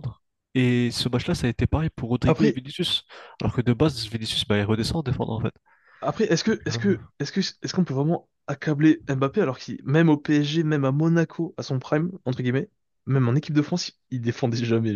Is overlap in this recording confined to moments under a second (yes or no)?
yes